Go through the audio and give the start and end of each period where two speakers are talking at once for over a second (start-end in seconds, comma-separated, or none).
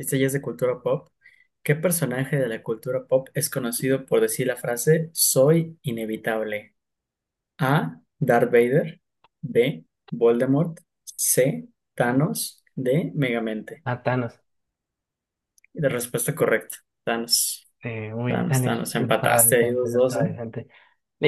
18.2-20.3